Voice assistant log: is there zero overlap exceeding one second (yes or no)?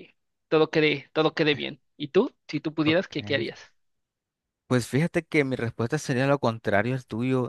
yes